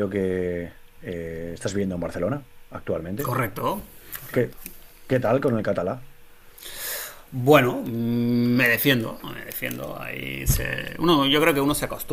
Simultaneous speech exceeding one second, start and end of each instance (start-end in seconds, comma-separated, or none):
none